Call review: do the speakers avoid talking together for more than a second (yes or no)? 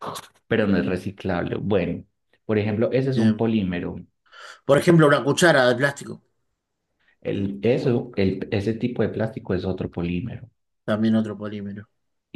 yes